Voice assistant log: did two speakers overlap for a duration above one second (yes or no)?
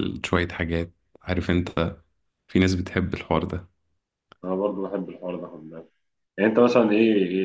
no